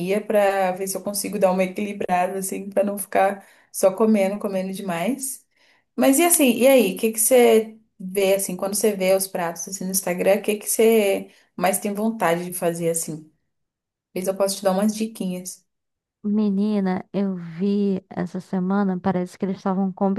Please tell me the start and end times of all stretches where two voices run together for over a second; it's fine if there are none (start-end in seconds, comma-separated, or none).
none